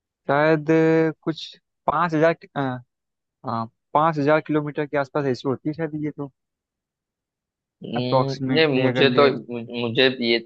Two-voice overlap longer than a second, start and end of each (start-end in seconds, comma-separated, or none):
8.0-9.4